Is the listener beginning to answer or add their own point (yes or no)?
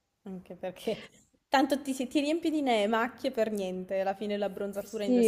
yes